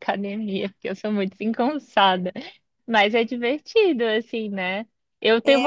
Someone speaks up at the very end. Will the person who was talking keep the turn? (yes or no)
yes